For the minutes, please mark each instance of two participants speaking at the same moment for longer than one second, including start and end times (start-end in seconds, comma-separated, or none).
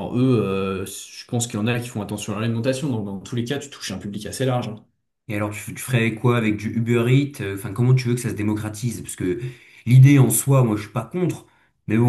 none